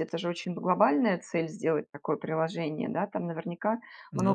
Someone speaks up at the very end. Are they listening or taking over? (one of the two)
listening